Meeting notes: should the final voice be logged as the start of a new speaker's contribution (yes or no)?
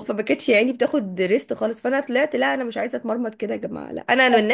no